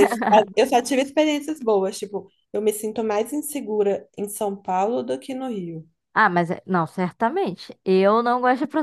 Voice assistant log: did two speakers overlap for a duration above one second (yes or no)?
no